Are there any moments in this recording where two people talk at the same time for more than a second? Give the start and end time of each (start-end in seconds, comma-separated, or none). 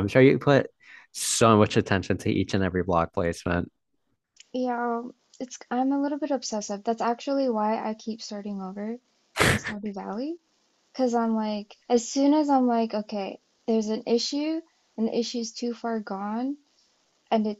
none